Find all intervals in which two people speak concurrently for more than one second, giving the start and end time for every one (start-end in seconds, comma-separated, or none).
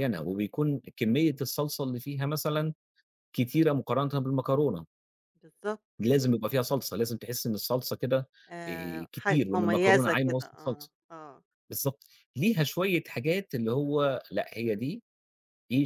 8.7-10.9